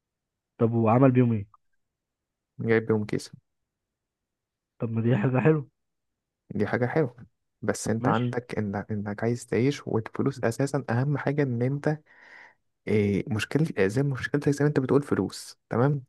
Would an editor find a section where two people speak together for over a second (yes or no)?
no